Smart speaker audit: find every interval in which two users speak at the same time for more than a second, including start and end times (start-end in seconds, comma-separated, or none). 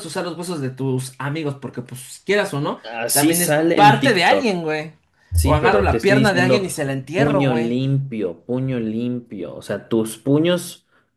2.8-4.6, 5.4-7.8